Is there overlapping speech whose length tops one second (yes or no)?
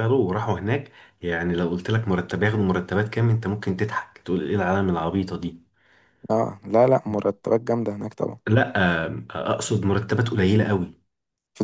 no